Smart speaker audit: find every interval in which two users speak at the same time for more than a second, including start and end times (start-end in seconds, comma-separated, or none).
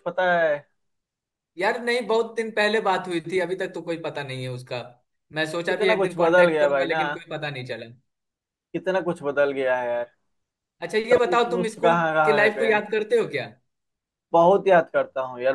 5.7-7.0, 11.1-12.8